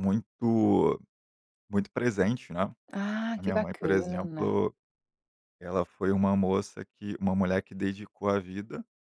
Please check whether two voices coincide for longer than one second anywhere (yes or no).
yes